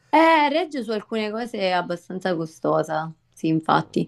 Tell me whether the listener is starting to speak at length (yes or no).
no